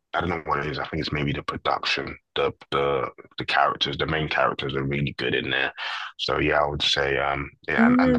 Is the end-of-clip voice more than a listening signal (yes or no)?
yes